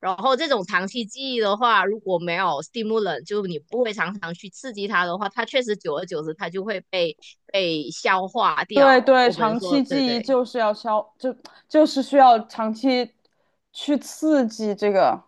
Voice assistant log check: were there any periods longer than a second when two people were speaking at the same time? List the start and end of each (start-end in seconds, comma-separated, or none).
8.7-10.3